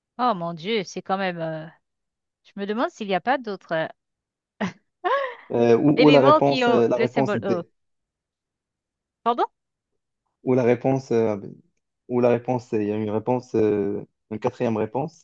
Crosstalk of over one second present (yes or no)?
yes